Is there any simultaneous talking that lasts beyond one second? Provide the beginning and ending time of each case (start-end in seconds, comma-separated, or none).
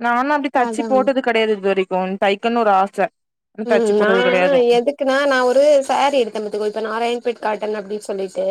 none